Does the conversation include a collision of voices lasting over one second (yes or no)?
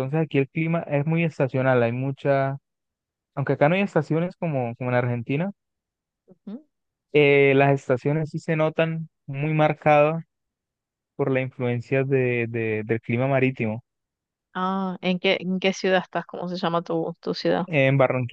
no